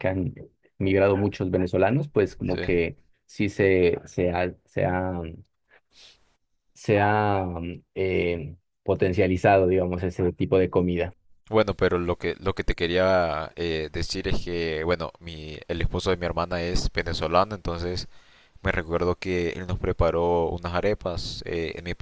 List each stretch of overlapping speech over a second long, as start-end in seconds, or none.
none